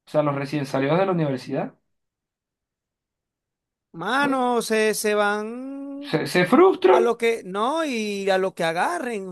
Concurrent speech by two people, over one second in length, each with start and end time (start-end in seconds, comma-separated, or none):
none